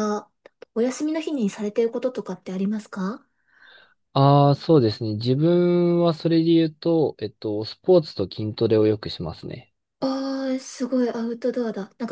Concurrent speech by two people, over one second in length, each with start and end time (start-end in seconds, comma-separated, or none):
none